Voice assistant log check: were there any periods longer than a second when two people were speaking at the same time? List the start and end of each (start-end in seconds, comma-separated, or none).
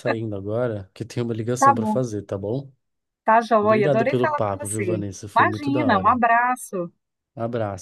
3.6-6.2